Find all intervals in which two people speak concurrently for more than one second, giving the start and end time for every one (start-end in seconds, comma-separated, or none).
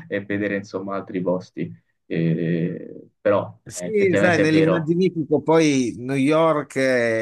3.6-5.0